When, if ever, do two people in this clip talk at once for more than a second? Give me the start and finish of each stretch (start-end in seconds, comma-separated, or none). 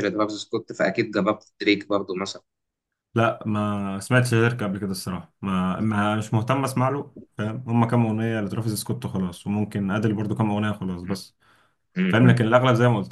none